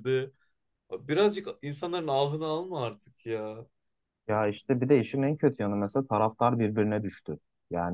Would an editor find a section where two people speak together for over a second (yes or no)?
no